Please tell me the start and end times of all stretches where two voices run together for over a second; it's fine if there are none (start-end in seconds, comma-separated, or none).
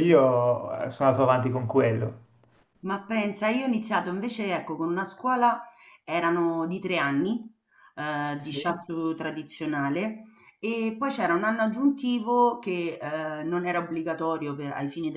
none